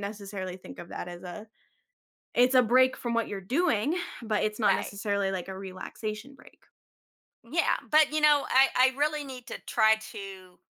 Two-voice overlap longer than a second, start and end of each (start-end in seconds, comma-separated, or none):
none